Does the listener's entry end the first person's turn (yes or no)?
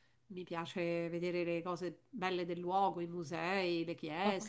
yes